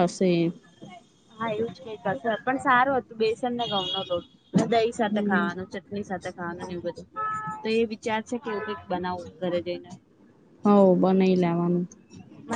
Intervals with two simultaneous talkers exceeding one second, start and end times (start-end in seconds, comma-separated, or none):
none